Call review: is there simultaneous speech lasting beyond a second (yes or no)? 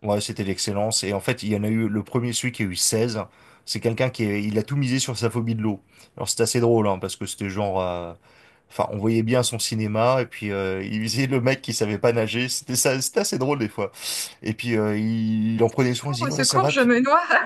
yes